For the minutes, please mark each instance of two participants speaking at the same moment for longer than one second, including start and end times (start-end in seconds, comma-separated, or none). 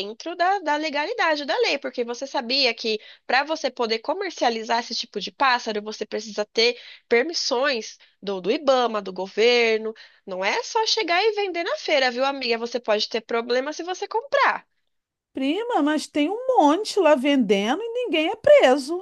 none